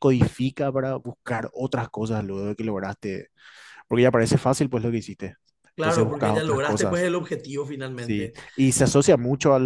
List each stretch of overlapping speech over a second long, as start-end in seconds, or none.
5.8-7.0